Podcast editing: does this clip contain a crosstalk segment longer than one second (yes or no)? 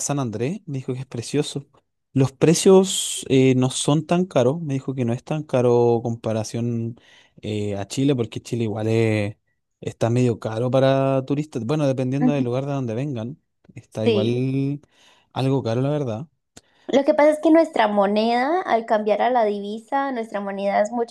no